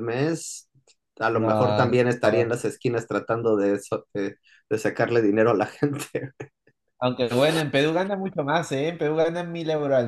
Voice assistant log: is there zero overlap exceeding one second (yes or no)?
no